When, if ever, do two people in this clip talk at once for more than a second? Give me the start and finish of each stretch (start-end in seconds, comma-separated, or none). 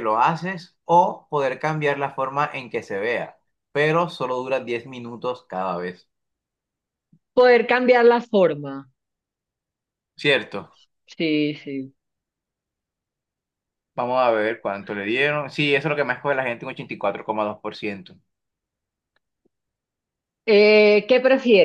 none